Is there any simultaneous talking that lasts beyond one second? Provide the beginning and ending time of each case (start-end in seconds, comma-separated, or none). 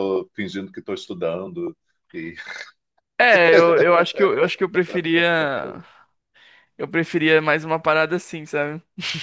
none